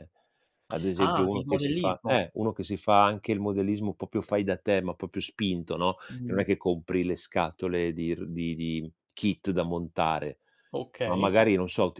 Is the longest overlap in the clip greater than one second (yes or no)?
yes